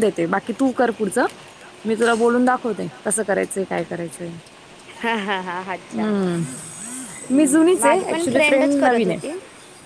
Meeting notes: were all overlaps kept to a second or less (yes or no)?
no